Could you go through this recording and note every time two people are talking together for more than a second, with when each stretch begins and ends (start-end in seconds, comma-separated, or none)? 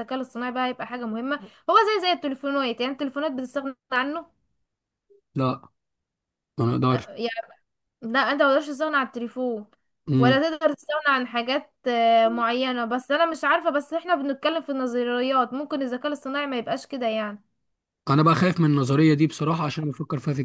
none